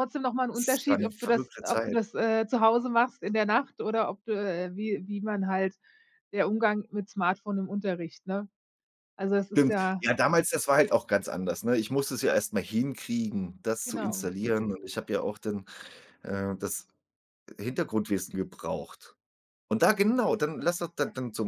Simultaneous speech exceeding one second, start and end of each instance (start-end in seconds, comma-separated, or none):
0.5-2.0